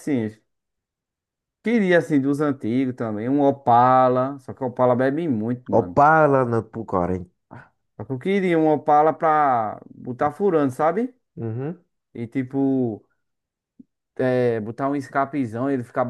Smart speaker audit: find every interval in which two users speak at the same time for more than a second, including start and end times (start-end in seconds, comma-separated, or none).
none